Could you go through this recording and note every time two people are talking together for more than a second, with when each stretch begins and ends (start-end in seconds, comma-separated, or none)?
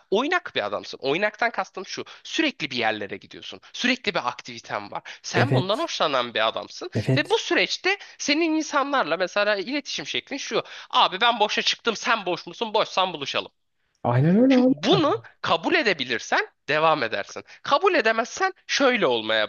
none